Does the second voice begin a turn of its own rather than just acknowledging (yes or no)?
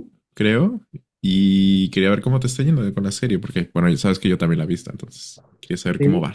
yes